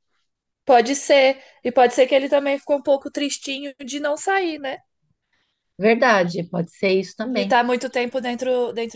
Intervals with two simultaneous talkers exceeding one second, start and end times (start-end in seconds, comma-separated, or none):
none